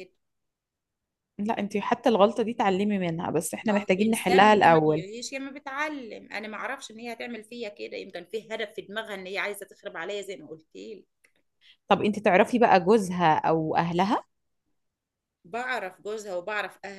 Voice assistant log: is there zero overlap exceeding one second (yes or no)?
no